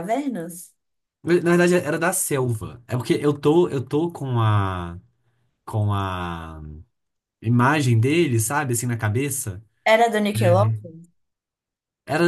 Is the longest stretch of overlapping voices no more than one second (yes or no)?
yes